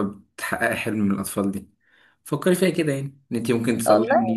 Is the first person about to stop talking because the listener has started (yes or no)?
no